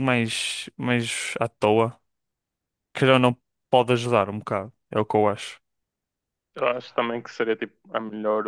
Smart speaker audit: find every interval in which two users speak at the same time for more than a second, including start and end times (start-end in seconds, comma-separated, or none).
none